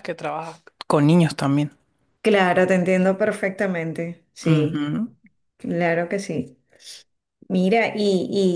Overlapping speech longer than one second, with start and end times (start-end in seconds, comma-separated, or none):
none